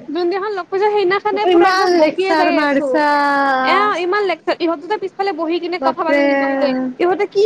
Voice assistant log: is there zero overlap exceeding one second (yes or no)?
no